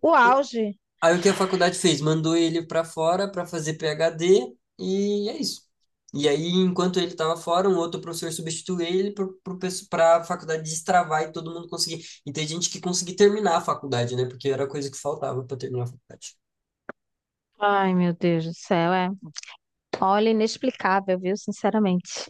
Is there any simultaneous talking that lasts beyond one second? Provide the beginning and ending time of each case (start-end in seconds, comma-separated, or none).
none